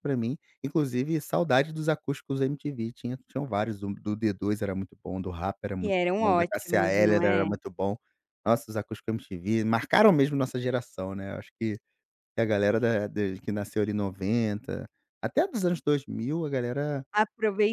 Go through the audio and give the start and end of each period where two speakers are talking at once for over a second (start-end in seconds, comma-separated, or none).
5.8-7.5